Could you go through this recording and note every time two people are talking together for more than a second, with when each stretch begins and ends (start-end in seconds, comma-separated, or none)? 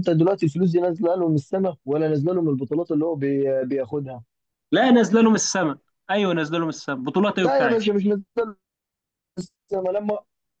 none